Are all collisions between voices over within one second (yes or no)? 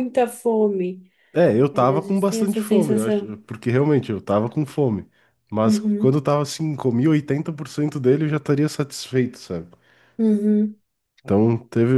no